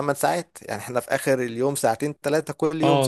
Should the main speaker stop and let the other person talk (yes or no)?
yes